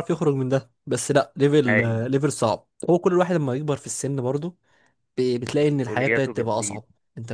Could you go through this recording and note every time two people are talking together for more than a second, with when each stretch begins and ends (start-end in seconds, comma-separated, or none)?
5.5-6.8